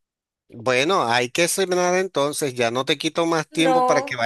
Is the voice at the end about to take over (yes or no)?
no